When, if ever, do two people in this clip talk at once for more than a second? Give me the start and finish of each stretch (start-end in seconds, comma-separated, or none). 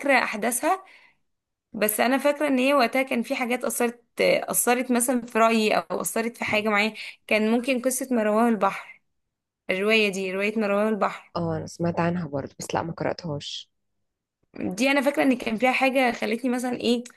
none